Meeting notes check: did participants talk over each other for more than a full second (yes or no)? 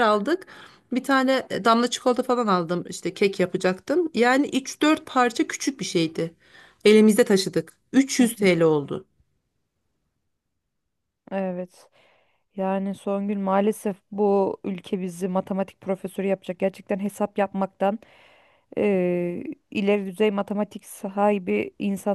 no